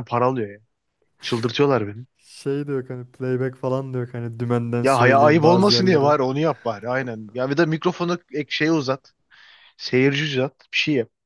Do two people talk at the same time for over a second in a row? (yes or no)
yes